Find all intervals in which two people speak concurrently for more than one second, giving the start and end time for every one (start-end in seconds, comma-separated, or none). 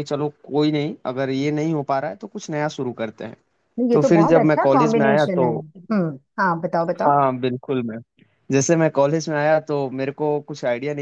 3.9-5.4